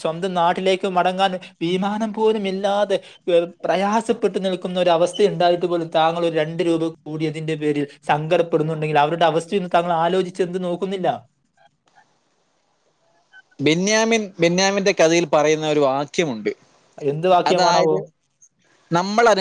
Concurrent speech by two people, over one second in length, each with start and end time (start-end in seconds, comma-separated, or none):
none